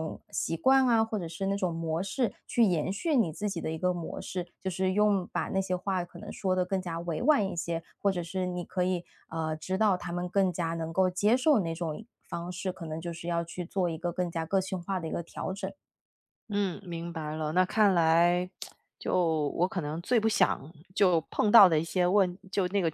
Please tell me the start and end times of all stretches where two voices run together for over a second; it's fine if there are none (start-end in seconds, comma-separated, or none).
none